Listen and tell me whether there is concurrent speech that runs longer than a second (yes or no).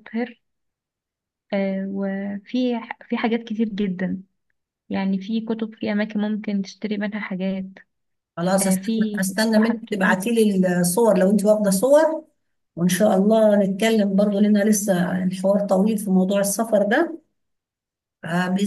yes